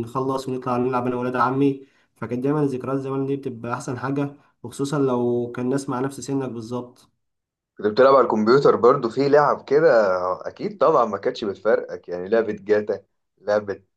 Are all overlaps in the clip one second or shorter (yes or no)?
yes